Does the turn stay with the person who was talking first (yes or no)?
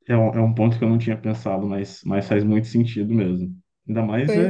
yes